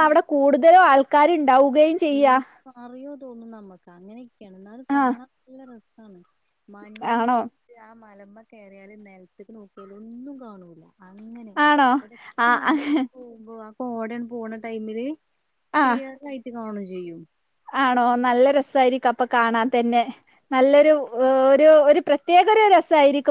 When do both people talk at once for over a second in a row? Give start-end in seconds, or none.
none